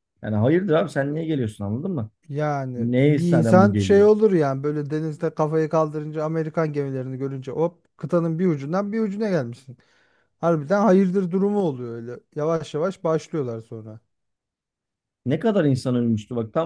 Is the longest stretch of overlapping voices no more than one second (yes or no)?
no